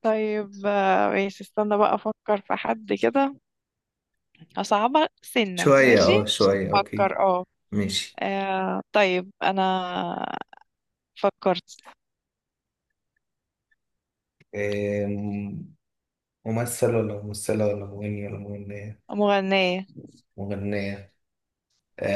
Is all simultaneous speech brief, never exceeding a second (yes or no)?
no